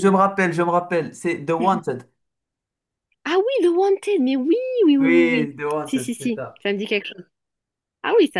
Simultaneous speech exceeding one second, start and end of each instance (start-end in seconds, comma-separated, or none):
5.0-6.6